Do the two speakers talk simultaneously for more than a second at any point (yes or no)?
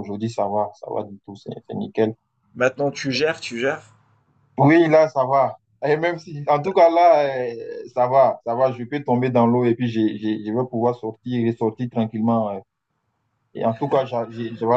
no